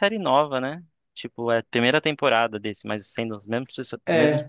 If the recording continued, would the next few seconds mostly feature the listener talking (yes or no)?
yes